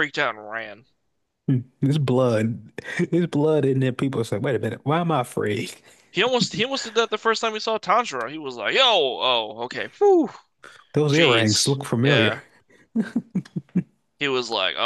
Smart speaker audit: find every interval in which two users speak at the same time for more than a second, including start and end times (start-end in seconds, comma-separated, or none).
11.1-12.4